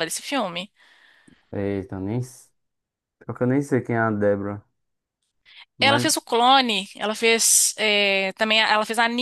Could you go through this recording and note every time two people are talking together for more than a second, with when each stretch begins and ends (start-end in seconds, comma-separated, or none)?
none